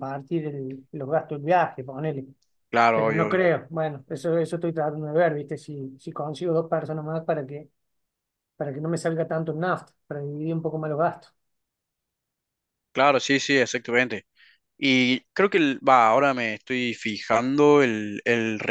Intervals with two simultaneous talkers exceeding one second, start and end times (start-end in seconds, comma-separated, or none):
none